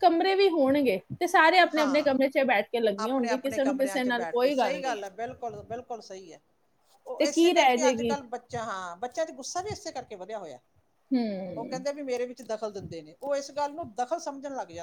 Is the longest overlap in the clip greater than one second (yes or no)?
yes